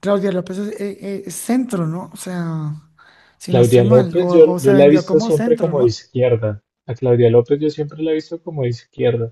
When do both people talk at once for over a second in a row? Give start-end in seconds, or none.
3.5-6.0